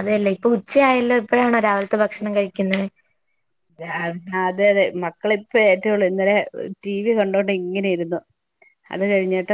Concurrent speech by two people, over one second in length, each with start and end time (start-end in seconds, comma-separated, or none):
none